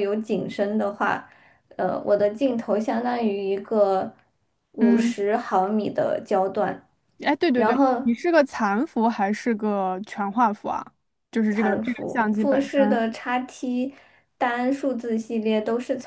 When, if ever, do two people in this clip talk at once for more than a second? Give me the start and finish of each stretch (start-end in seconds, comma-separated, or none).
11.5-13.1